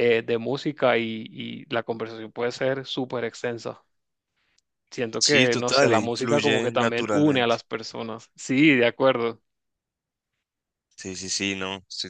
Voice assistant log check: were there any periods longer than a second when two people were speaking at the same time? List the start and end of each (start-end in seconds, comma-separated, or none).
5.2-7.6